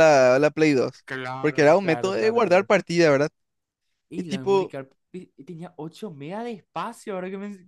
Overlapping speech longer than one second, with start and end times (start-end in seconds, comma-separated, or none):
1.4-2.7